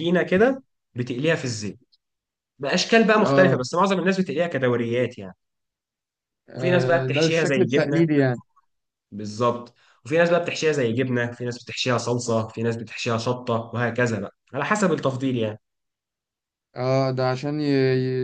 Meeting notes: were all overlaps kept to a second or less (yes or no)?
no